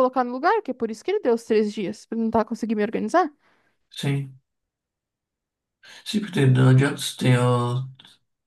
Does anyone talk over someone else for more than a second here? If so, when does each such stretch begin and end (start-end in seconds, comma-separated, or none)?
none